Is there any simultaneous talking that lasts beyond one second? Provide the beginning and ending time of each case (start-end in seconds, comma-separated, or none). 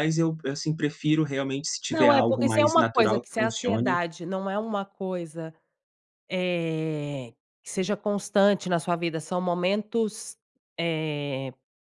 1.9-4.0